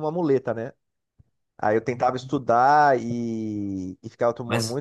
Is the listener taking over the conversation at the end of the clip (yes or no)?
no